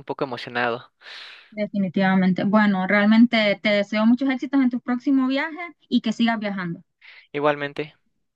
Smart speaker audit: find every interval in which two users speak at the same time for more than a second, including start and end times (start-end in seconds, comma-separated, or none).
none